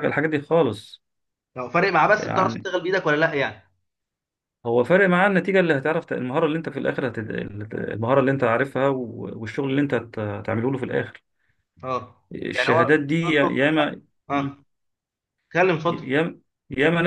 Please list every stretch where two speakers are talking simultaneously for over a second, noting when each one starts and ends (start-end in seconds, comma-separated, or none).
12.3-13.9